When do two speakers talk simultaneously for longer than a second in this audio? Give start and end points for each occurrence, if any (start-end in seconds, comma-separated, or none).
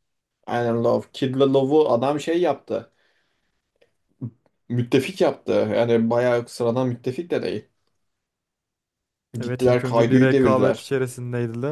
9.4-10.9